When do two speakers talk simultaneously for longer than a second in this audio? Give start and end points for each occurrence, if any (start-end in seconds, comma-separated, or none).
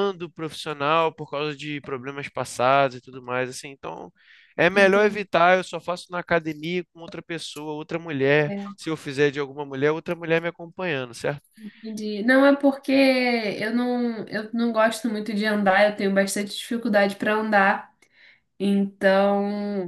none